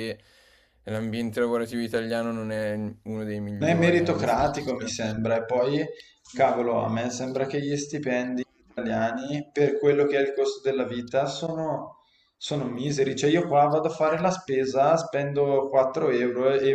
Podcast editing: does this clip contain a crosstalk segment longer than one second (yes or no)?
yes